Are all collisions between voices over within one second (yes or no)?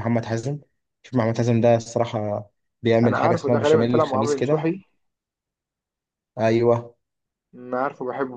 no